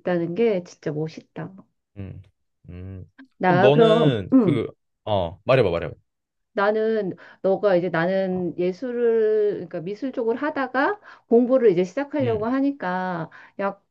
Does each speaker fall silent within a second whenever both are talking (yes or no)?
no